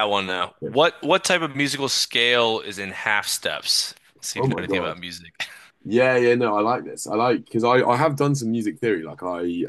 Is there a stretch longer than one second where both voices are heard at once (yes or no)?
no